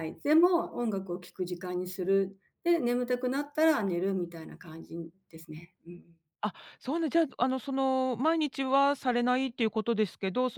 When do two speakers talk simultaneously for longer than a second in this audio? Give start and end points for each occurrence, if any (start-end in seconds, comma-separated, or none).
none